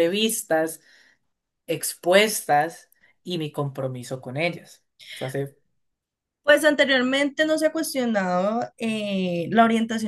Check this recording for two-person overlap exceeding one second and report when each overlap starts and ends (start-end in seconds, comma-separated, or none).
none